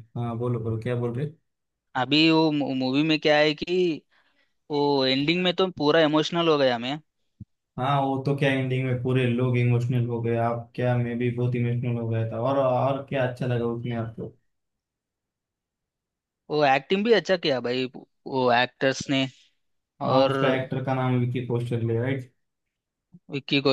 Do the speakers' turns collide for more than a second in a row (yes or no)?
no